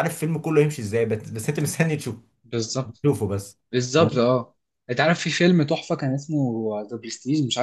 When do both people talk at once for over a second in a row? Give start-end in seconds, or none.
none